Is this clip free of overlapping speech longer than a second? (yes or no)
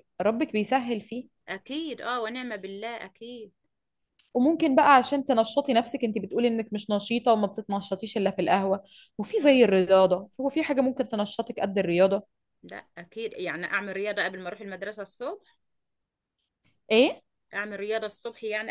yes